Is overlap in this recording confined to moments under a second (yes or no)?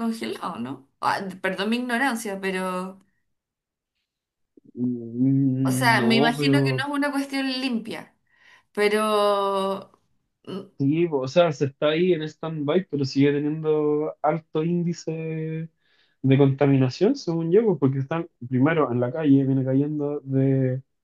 no